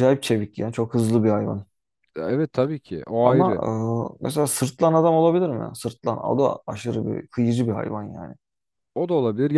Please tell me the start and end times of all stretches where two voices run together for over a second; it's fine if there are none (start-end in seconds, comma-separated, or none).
none